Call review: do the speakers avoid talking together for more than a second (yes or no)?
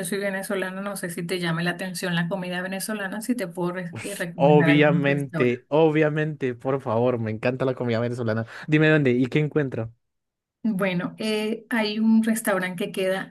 no